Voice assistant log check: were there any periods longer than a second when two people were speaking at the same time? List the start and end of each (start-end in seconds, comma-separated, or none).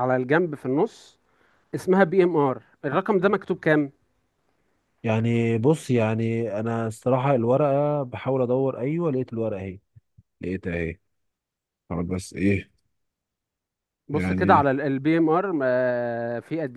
none